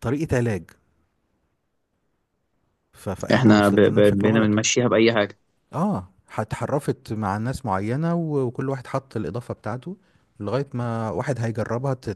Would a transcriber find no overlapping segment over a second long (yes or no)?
no